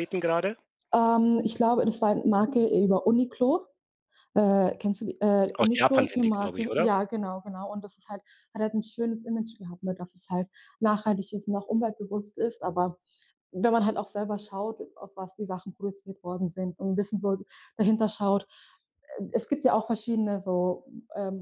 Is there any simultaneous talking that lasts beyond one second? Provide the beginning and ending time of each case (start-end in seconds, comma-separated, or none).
5.5-6.9